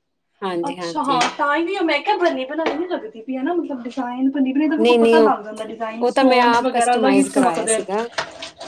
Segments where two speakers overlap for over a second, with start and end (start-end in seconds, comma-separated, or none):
6.1-7.8